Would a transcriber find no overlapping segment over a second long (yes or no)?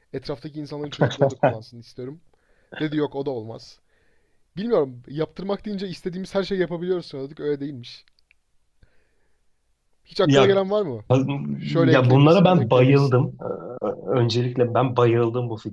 no